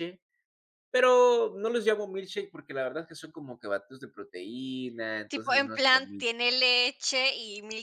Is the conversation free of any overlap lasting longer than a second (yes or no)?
no